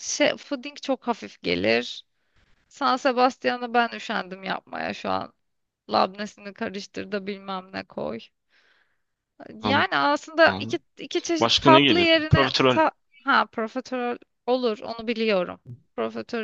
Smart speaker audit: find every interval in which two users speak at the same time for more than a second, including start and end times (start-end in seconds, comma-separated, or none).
11.4-12.8